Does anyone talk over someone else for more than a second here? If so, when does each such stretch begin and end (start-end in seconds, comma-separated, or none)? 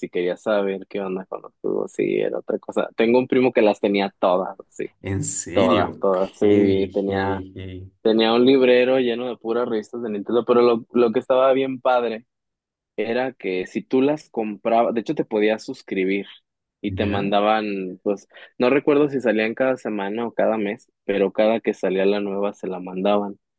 5.5-7.4